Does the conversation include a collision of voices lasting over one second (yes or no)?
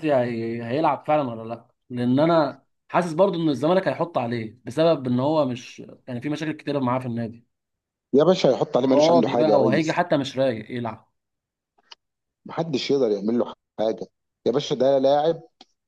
yes